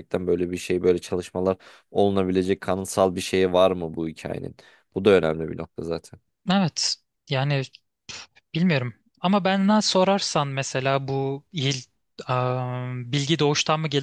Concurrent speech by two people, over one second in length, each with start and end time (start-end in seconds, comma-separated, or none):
none